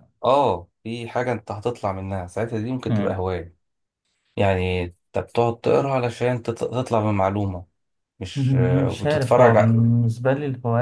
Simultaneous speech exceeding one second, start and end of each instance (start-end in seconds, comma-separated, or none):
8.4-9.8